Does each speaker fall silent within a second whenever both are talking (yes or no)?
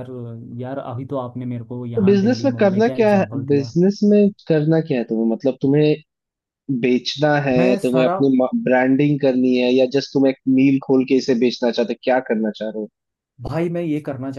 no